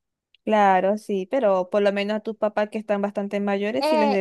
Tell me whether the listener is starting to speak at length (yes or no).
yes